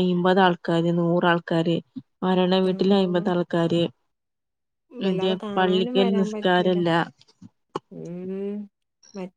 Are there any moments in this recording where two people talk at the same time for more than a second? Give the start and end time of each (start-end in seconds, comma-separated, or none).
5.1-6.7